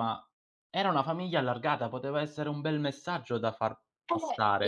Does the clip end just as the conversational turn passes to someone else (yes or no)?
yes